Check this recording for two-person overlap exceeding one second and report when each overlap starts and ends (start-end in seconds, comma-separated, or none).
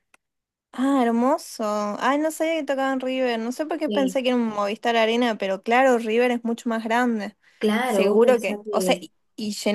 7.8-9.1